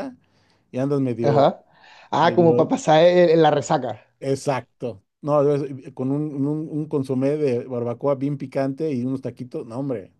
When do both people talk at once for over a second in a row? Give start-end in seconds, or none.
none